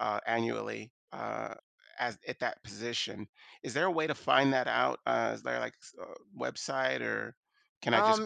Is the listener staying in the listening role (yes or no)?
no